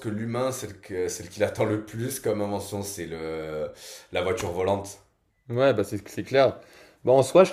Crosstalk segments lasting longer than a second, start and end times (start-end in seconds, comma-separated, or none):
none